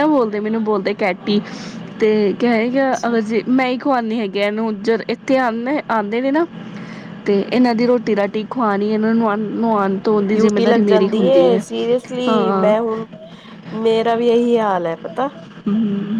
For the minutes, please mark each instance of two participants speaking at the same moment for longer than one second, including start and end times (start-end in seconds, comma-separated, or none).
10.3-11.6